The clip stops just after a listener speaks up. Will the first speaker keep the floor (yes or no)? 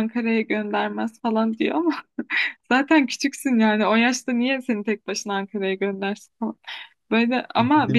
yes